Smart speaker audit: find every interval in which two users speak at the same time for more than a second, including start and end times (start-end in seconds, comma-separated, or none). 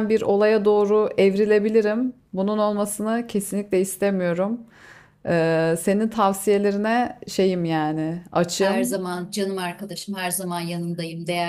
none